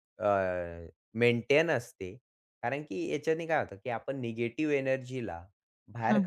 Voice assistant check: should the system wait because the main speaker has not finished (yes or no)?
yes